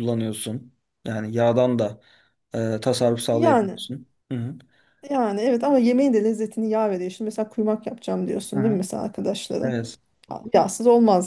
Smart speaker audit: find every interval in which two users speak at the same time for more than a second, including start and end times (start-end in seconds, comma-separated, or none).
none